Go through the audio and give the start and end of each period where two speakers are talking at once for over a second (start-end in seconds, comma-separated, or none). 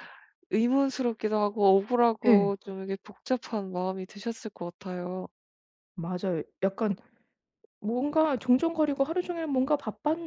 none